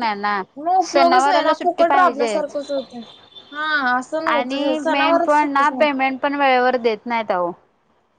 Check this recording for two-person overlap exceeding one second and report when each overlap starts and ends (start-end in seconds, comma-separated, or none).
0.9-2.5, 4.3-5.9